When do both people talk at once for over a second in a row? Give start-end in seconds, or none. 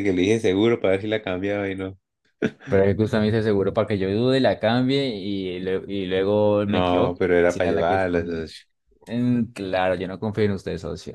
6.7-8.5